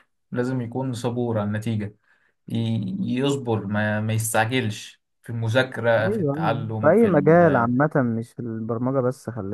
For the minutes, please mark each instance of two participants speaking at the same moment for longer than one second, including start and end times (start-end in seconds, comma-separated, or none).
5.9-7.7